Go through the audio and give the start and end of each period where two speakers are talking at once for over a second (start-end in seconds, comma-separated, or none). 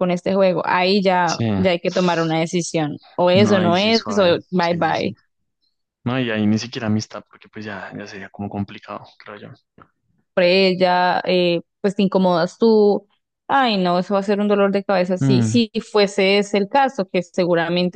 3.3-5.2